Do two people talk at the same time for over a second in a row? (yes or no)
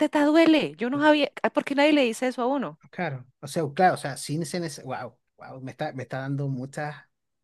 no